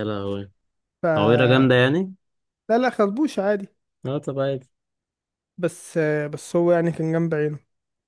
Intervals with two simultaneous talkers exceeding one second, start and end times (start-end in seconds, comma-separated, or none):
none